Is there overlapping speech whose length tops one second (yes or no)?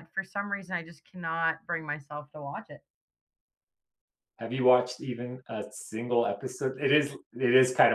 no